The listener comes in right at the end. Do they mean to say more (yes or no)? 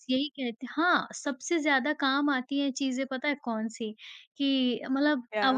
no